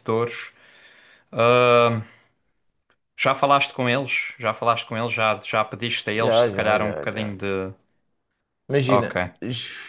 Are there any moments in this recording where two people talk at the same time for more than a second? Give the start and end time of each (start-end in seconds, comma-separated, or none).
6.1-7.3